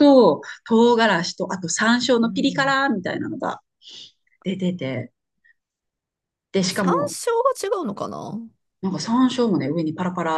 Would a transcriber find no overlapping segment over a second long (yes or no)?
yes